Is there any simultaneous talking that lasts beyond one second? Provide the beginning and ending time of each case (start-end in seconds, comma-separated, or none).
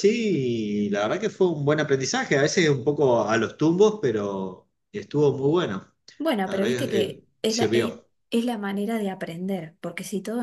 6.5-8.1